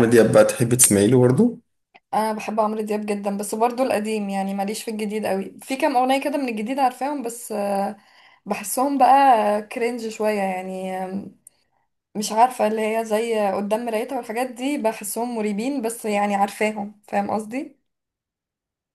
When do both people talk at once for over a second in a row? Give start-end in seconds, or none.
none